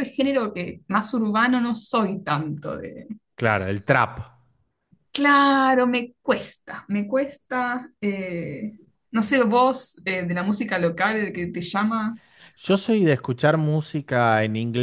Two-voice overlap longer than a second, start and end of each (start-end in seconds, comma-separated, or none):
none